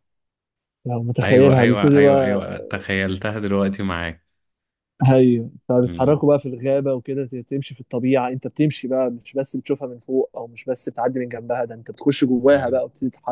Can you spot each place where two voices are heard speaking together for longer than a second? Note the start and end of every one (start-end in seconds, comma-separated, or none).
1.2-2.5